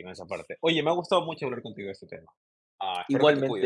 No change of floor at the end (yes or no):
no